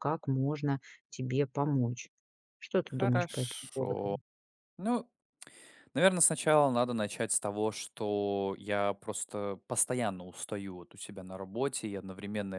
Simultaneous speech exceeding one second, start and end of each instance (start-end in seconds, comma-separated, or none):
2.9-4.2